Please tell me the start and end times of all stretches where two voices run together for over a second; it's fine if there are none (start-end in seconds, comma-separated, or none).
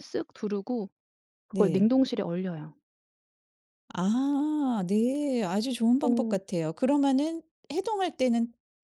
none